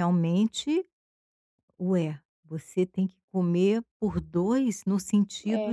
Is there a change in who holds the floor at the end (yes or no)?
no